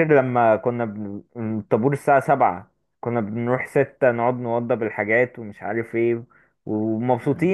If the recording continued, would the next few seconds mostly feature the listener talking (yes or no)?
no